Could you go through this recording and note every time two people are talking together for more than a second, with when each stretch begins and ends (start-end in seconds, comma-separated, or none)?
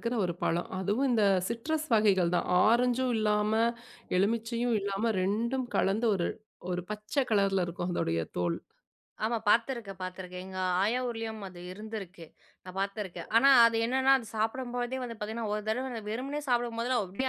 none